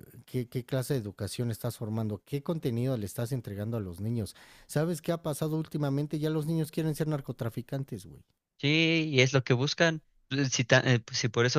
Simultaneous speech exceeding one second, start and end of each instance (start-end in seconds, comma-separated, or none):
none